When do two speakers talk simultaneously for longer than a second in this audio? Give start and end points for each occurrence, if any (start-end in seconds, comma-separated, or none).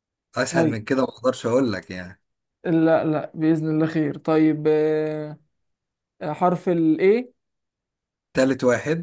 none